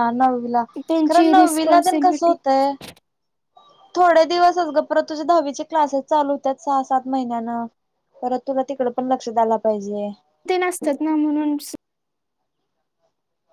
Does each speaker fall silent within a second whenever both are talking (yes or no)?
no